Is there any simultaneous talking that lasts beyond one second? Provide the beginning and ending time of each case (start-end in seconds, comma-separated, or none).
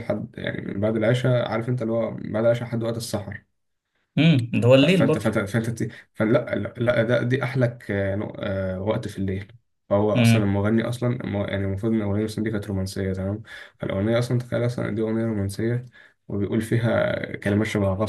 none